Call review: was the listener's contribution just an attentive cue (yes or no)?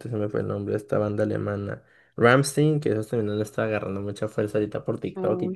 yes